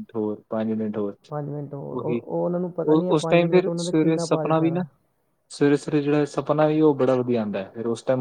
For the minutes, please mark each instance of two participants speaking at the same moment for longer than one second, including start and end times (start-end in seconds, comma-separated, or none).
2.9-4.8